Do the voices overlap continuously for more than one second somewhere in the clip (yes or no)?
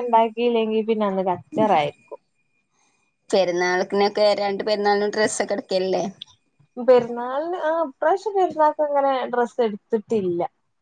no